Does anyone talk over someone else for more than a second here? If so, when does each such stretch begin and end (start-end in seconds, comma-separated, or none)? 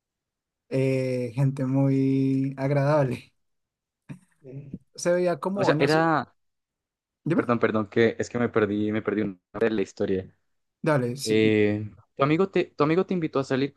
none